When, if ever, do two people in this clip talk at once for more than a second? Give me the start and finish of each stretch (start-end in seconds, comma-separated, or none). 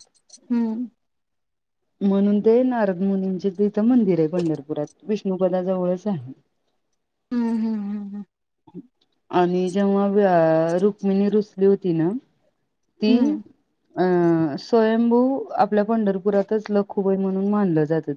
none